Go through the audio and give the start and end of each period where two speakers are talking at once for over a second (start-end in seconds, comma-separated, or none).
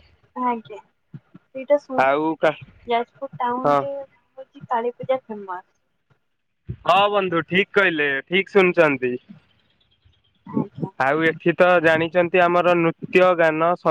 2.1-3.8